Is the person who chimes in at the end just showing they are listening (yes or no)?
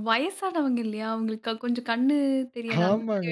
no